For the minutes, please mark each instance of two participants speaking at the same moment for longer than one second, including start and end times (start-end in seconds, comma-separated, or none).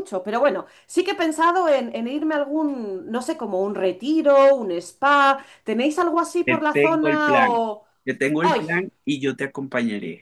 6.4-7.7